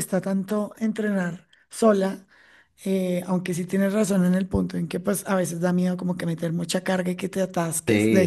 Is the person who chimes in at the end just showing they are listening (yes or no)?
yes